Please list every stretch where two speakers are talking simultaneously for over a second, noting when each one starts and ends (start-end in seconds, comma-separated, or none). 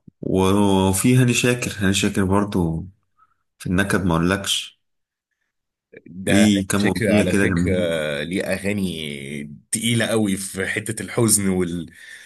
6.3-7.7